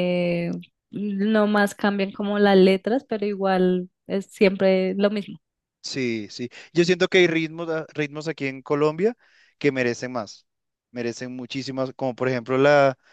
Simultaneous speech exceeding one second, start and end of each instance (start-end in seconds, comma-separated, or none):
none